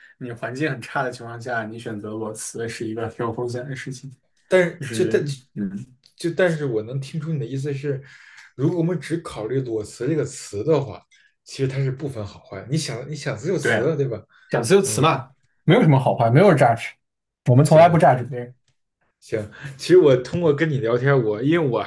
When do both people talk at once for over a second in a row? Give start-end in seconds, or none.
none